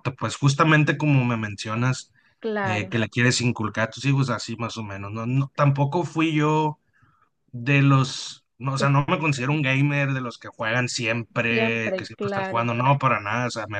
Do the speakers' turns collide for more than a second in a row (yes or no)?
yes